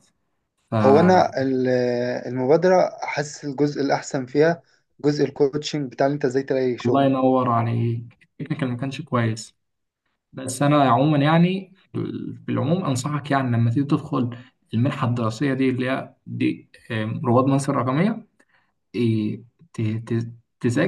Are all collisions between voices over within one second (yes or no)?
yes